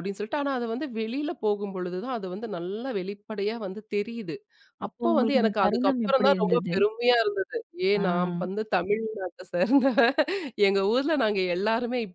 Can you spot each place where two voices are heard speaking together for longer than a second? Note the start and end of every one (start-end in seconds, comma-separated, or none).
4.9-6.7